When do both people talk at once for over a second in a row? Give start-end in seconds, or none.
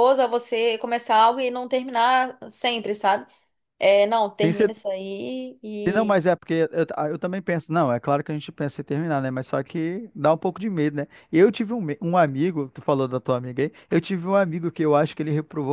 none